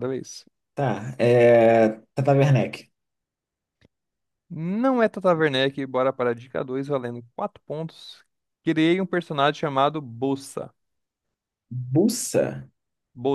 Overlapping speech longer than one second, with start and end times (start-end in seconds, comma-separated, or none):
none